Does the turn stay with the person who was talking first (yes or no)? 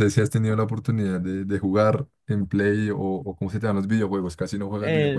no